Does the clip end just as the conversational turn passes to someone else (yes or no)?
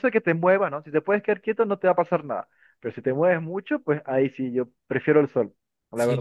yes